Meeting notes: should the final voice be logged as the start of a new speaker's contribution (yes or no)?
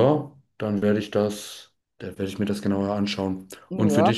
no